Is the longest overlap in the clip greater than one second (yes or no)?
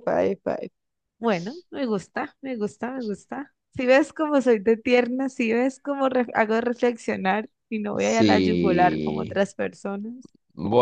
yes